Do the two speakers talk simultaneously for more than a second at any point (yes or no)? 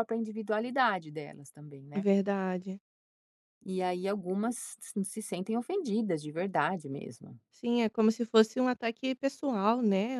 no